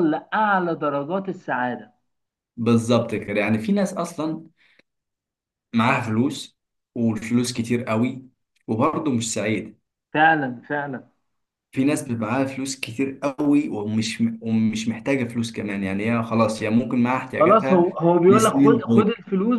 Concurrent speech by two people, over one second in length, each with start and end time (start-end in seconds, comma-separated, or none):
17.4-19.1